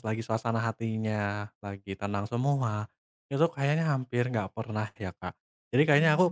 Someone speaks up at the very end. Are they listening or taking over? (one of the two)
listening